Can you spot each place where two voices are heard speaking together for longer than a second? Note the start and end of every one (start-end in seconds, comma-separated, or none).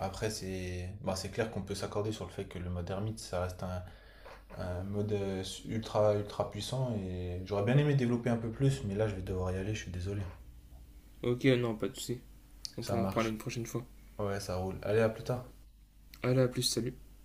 none